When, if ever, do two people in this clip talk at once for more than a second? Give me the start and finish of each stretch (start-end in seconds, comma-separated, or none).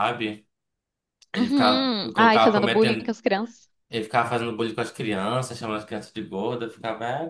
1.4-3.1